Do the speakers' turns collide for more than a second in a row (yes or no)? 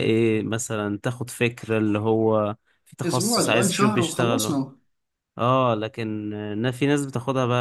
yes